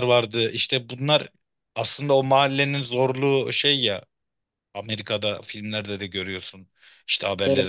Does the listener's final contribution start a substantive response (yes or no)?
no